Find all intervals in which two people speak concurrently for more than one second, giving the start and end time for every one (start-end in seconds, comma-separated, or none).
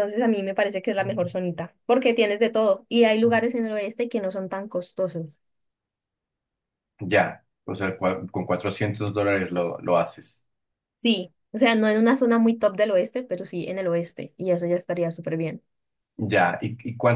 none